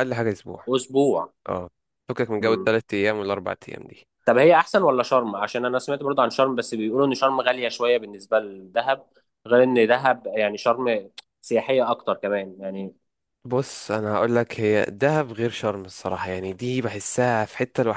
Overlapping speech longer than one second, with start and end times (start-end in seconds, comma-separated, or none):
none